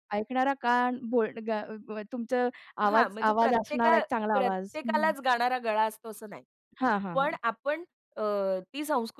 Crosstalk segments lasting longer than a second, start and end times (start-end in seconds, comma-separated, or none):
2.9-4.8